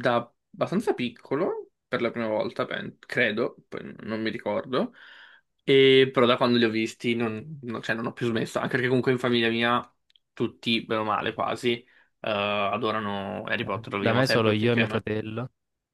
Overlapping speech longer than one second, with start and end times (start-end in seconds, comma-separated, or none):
13.6-15.1